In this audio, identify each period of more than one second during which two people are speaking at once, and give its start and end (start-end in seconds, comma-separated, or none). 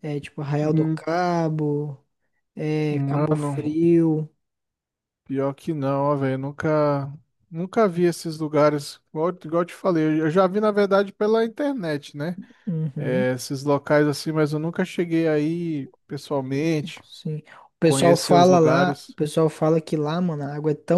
17.8-19.2